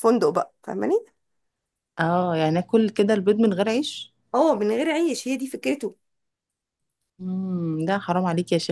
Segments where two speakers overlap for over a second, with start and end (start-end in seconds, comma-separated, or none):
none